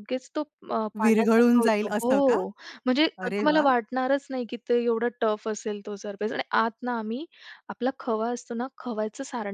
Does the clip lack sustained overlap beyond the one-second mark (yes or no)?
no